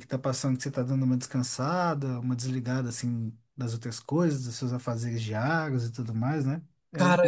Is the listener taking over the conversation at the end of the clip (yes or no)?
yes